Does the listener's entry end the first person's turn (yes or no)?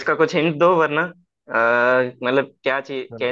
yes